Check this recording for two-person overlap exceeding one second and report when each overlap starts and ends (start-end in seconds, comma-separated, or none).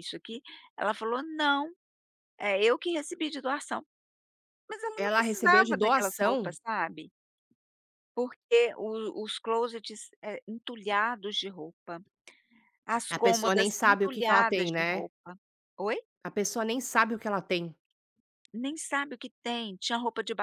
5.0-6.6, 13.1-15.0